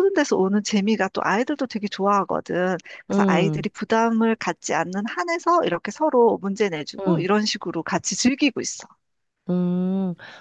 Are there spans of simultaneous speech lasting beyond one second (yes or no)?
no